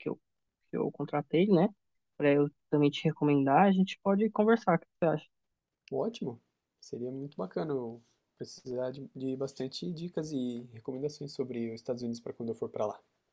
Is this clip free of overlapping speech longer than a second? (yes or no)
yes